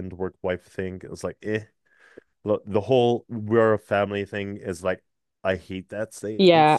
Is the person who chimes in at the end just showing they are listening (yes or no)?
no